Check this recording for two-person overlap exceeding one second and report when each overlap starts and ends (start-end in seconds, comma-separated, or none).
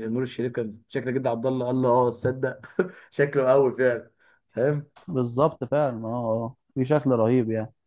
none